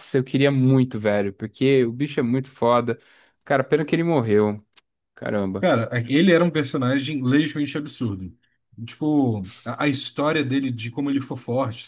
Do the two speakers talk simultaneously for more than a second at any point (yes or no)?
no